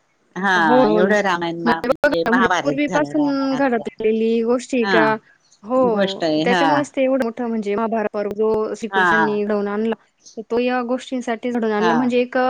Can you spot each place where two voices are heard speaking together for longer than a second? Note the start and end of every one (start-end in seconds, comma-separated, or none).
2.0-3.8